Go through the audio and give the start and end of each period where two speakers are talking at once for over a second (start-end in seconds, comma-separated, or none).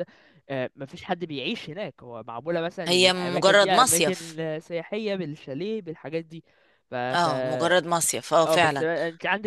2.9-4.2